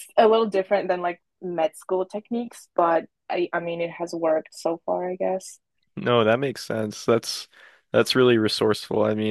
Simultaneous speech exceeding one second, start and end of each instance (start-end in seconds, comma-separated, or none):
none